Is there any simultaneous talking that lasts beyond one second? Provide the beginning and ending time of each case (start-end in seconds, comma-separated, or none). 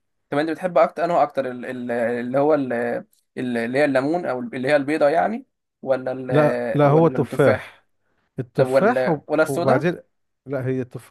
6.3-7.8, 8.6-9.8